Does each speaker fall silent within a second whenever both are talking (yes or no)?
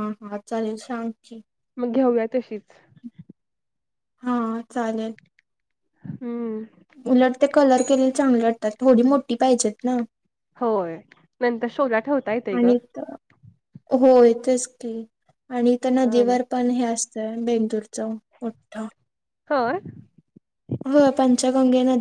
yes